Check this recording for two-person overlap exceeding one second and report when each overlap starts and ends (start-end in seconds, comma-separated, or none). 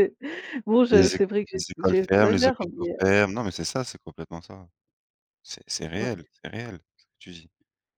0.9-3.0